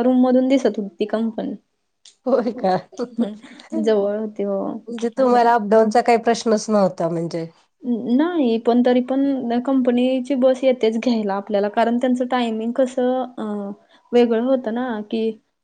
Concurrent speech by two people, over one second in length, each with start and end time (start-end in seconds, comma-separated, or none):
3.8-5.5